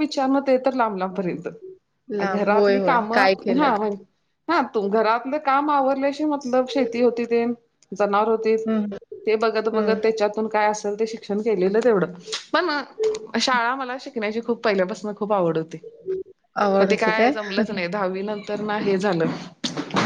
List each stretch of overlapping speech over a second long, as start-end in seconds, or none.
2.3-3.7